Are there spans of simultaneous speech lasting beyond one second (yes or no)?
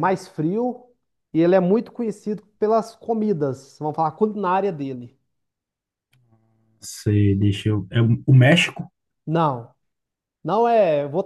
no